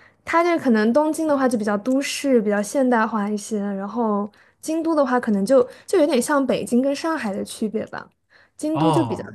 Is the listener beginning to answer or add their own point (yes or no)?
no